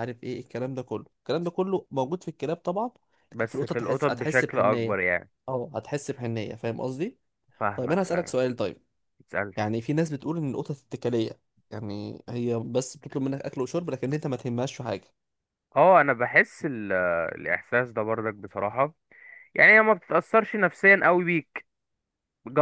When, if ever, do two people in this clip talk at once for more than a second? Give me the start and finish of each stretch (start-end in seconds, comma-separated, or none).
3.3-5.0